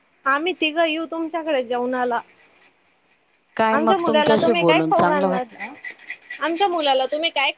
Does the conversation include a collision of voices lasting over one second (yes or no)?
yes